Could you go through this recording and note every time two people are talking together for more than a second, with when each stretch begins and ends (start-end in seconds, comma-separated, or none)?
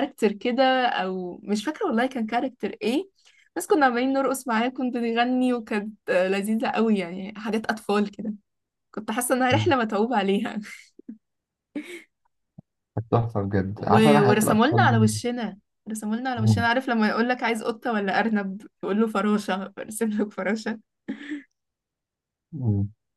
13.8-15.1